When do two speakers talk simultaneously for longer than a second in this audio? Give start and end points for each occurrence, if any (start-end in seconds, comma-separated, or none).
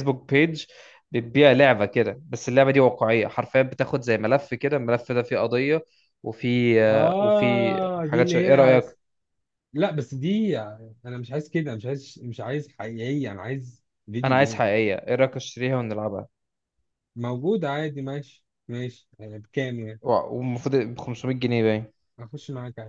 6.9-8.8